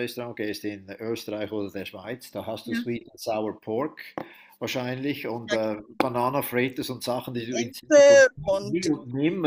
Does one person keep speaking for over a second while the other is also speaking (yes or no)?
yes